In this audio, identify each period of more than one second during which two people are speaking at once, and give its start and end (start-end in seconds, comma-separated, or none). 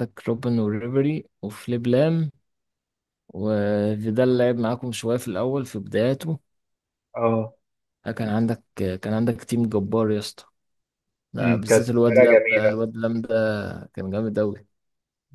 11.4-12.8